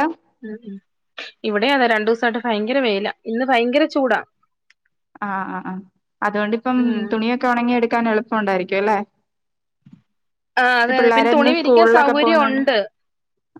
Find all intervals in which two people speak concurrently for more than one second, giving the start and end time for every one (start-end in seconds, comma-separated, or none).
11.0-12.6